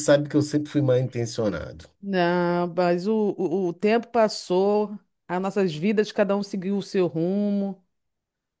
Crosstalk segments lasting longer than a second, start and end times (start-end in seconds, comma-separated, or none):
none